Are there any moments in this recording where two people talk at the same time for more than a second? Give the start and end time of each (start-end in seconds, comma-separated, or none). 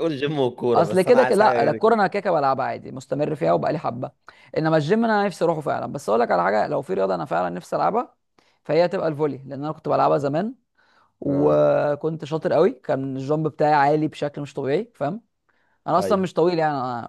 0.7-2.0